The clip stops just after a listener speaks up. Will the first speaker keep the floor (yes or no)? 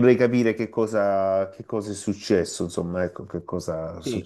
no